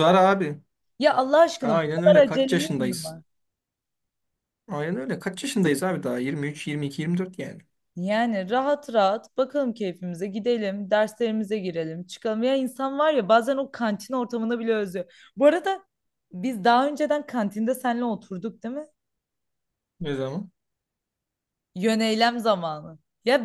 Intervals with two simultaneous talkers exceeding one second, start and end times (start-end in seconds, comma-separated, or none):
1.6-3.2